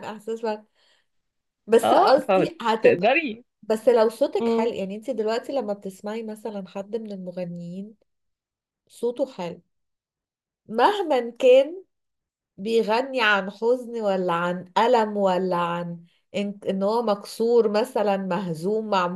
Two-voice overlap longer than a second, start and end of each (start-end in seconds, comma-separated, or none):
1.8-3.1